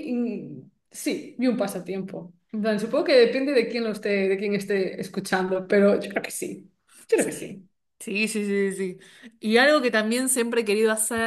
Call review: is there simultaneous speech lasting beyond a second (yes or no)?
no